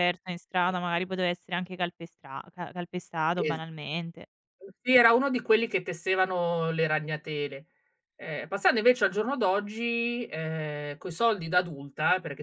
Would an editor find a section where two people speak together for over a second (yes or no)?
no